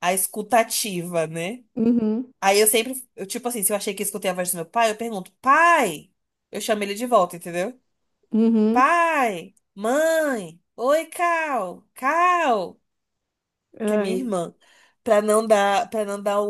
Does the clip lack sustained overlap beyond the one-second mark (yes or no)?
yes